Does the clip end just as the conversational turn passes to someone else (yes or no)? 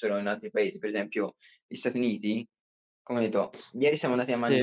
no